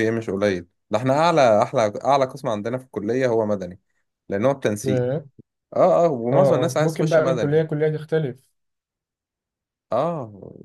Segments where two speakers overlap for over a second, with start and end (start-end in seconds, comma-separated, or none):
6.3-7.6